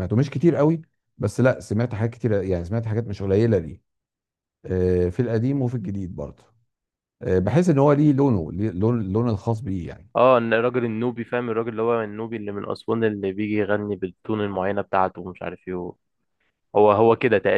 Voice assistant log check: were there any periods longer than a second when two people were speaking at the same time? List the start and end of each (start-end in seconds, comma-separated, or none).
none